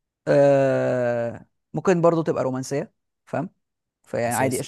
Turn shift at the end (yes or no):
no